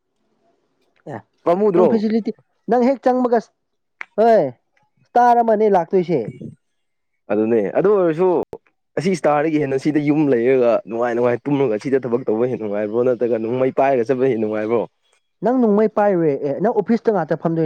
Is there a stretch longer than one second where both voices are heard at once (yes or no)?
no